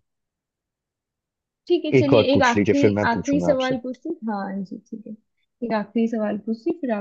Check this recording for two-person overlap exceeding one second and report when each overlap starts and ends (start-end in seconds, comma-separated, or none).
2.0-3.8